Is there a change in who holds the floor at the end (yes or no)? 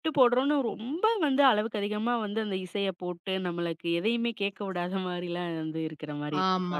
yes